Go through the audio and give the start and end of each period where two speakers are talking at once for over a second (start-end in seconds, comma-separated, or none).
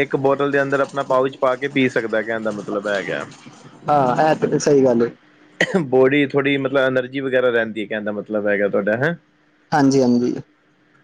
none